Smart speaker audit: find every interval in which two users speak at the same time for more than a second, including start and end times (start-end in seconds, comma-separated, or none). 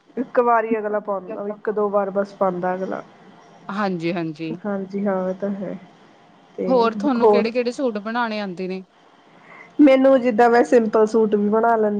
none